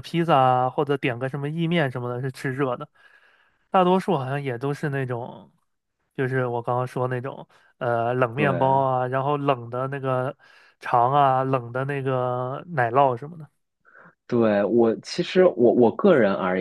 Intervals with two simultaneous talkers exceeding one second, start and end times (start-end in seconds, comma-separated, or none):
none